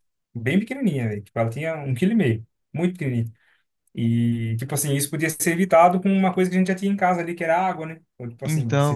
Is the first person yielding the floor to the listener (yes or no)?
no